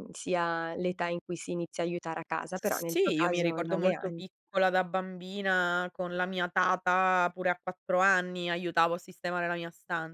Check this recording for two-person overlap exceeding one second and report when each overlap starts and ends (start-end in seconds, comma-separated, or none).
2.5-4.2